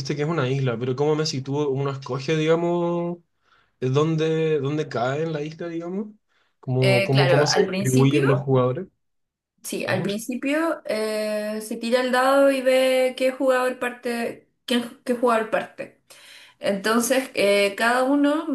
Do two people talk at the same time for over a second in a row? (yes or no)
yes